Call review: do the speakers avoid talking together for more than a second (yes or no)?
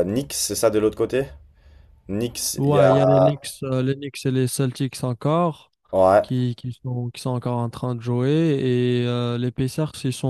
yes